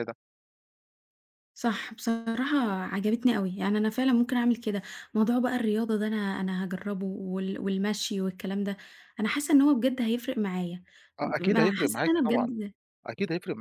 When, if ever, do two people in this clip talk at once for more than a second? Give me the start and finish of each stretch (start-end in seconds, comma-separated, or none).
11.2-12.6